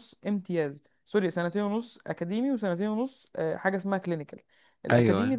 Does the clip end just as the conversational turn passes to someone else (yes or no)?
no